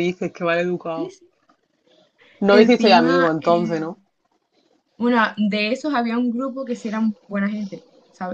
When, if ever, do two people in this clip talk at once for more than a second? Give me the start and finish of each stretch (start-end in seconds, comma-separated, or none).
2.5-3.8